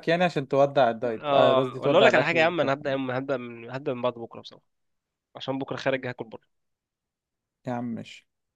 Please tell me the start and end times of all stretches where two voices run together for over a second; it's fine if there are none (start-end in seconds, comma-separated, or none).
1.2-2.7